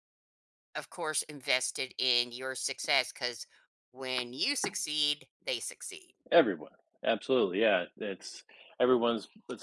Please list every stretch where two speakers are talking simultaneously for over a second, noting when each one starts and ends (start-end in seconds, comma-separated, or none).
none